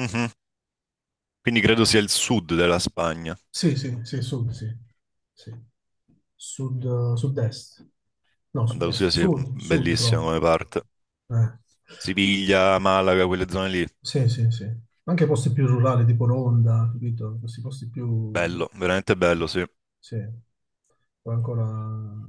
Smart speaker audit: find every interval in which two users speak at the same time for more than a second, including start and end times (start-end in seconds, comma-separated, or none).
8.7-10.2